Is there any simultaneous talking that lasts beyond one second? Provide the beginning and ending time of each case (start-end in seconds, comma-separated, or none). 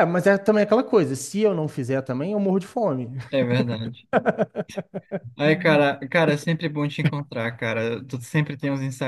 none